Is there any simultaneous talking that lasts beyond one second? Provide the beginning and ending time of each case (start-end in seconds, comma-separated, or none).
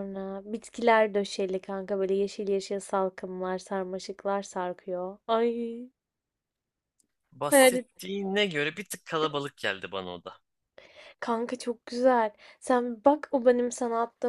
none